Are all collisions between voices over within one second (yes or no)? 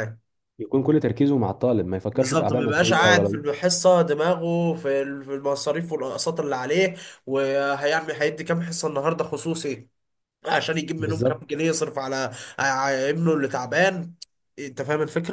no